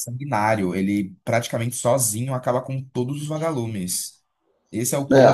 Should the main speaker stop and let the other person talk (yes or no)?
no